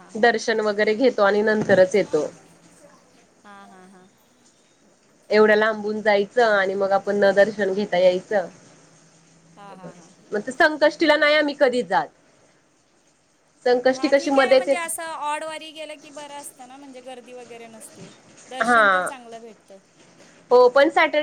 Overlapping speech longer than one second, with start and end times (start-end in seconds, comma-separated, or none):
none